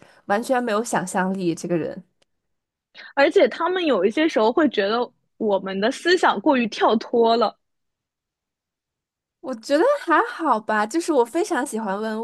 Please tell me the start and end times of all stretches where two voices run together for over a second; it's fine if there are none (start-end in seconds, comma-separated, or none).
none